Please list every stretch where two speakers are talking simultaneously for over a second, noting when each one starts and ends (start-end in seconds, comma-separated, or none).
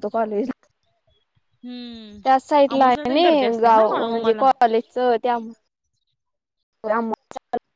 2.7-4.4